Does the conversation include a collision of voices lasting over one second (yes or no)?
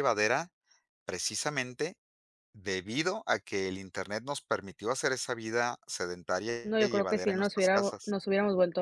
yes